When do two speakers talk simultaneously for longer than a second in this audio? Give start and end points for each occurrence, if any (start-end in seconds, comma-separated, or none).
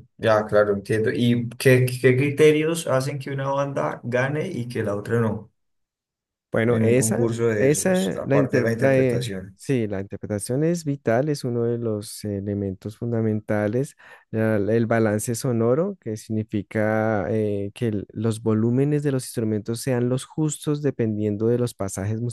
6.7-9.6